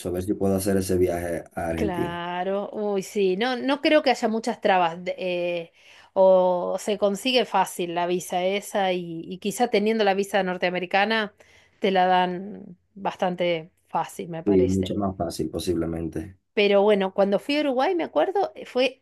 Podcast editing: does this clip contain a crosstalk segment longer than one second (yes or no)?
no